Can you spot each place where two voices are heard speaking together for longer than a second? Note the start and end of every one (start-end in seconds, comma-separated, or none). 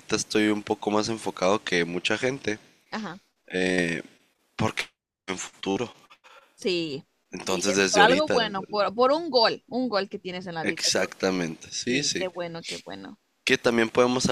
7.3-8.9